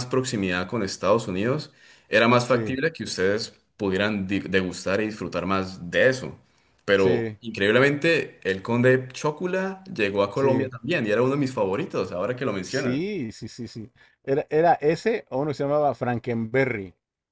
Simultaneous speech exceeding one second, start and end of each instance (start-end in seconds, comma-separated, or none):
none